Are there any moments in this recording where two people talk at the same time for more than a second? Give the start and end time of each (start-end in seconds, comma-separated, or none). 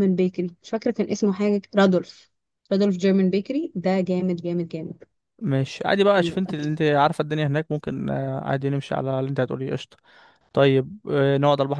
none